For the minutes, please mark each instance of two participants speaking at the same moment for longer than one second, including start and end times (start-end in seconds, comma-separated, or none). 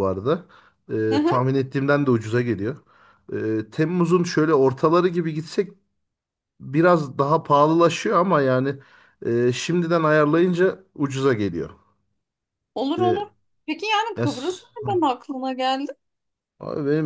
none